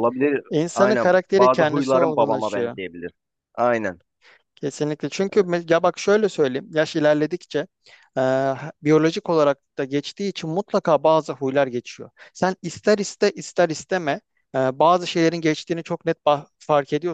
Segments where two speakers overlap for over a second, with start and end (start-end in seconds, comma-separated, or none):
0.5-2.8